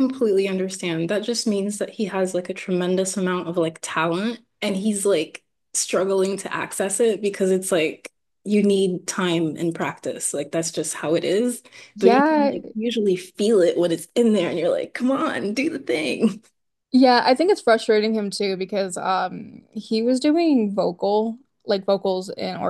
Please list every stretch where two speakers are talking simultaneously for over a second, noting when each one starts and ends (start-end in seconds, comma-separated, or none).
none